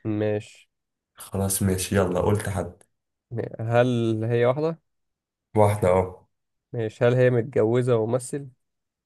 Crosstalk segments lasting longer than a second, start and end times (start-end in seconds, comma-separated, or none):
none